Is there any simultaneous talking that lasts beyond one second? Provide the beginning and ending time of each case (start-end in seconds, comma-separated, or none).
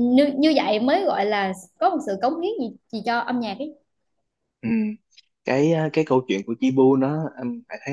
none